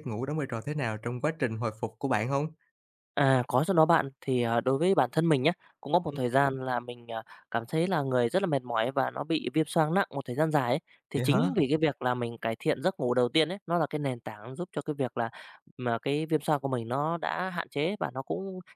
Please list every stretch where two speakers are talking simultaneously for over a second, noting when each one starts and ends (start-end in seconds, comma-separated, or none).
none